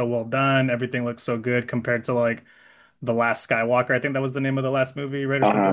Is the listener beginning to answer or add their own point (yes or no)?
yes